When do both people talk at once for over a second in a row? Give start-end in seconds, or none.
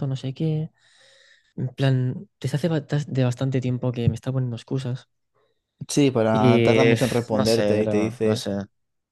6.3-8.5